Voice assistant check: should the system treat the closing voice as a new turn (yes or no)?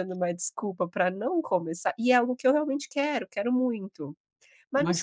yes